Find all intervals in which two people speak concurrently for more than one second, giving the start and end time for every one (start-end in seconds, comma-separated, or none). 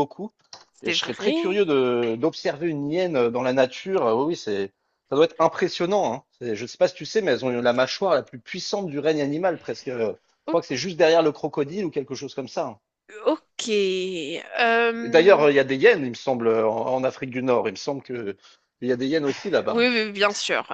none